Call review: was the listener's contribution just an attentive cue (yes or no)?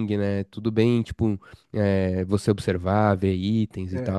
no